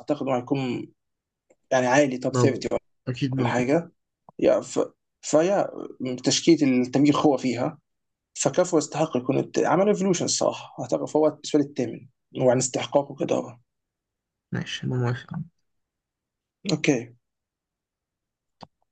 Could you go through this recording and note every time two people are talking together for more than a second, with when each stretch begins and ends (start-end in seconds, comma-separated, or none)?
none